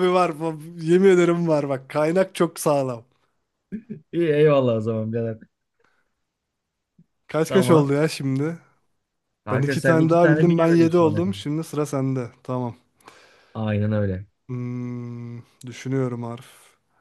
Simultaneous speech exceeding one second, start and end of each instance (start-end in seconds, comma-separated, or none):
9.5-11.4